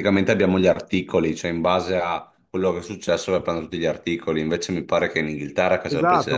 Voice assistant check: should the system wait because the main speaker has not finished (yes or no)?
no